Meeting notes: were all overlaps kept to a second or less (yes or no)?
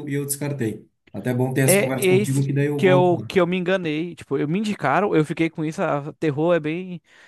no